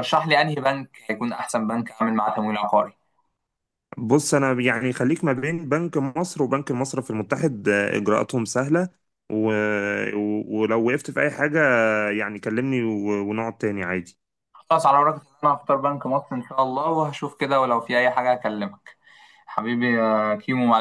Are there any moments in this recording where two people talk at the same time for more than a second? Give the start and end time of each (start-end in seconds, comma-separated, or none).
none